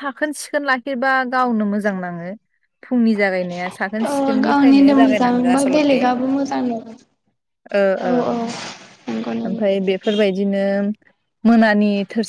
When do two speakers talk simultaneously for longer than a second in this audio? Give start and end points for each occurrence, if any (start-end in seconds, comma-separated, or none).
4.4-6.0